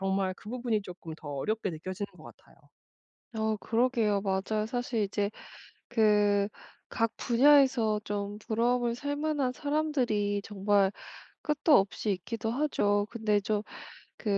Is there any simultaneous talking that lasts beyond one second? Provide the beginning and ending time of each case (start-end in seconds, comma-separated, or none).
none